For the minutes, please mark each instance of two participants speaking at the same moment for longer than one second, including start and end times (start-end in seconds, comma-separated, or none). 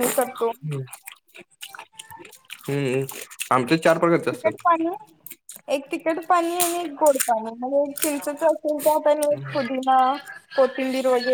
none